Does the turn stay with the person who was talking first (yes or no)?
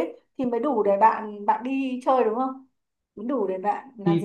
no